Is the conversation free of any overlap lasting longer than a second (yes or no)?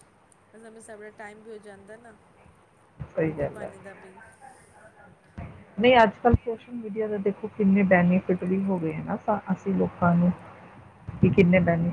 yes